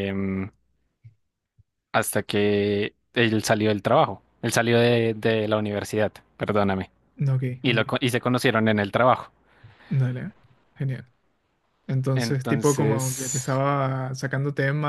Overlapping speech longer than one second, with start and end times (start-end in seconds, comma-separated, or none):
12.1-13.5